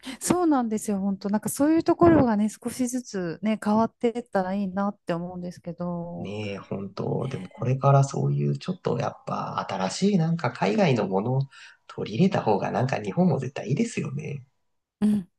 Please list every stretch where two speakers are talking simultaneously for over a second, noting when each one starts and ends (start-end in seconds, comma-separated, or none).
none